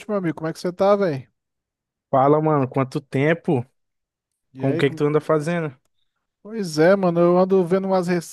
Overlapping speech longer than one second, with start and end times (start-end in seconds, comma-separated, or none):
none